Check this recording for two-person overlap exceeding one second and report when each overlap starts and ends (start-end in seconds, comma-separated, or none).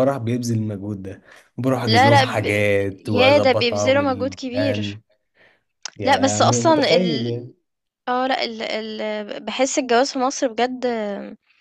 3.0-5.0, 6.0-7.3